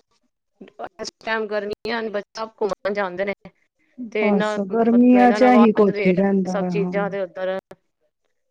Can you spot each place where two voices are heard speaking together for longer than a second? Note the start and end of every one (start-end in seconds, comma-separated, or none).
4.2-6.9